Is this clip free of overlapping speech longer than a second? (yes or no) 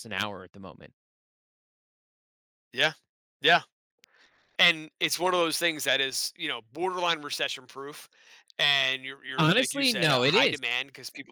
no